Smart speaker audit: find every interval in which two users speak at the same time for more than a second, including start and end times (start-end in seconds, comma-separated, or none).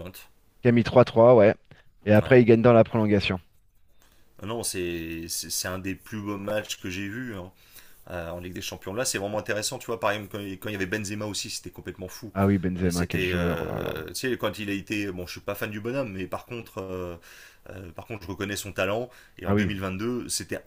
12.8-14.0